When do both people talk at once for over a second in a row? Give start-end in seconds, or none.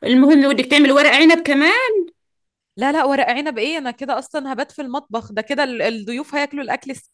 none